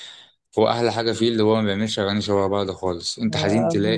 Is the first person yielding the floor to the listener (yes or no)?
no